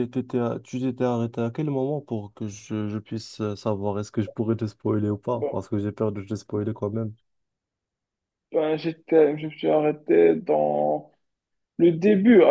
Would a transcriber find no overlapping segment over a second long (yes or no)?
yes